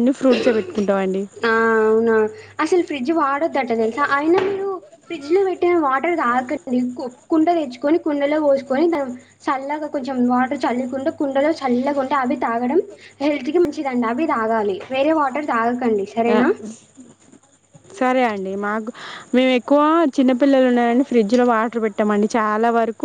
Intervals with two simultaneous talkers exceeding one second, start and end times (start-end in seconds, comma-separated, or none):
none